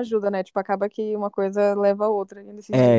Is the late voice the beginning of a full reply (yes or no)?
yes